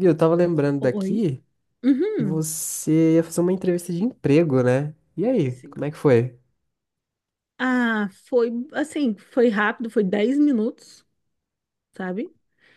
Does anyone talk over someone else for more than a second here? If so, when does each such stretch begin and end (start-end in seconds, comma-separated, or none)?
none